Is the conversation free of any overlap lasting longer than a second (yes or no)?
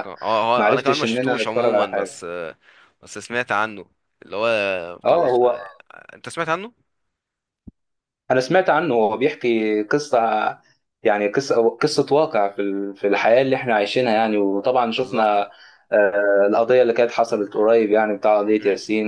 no